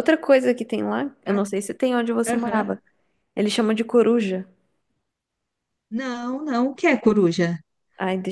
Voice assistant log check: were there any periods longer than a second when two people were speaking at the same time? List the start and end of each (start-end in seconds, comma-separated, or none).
none